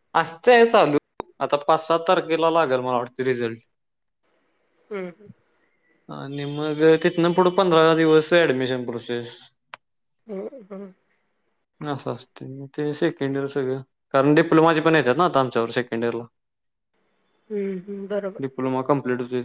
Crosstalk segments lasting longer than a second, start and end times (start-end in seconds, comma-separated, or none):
none